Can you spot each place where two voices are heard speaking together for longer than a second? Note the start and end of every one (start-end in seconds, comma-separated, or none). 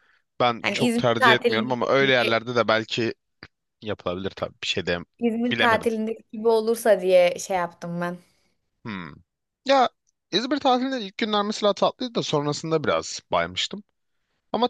0.6-2.4